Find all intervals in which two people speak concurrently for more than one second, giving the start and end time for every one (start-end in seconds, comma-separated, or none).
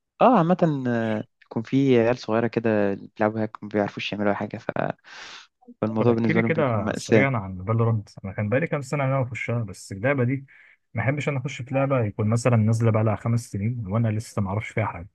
6.0-7.3